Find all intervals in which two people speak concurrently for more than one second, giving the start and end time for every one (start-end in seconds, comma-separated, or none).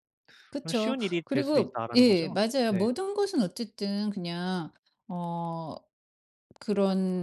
0.6-2.9